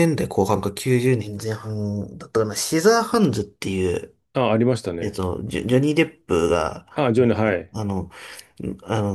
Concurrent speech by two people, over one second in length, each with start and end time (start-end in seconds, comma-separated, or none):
none